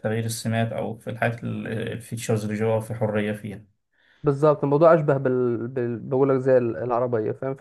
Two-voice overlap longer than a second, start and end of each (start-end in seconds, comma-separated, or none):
none